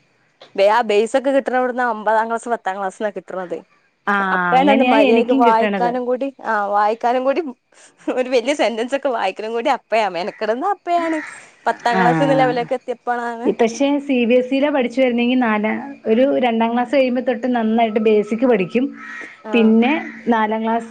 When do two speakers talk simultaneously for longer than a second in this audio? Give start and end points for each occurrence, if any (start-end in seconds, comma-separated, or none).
4.3-5.9, 12.0-13.5